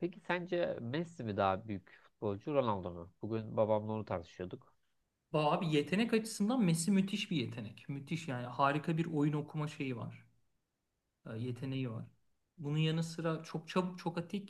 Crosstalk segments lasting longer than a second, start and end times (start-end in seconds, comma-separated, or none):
none